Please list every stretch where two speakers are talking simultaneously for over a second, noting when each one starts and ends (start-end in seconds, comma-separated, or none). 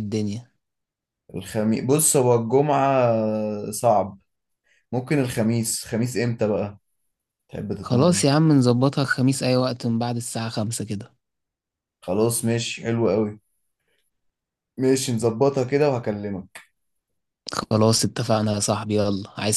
none